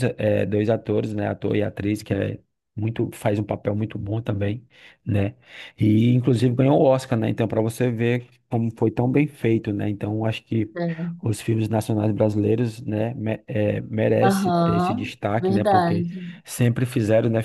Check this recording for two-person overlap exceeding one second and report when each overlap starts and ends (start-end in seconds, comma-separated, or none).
14.2-16.1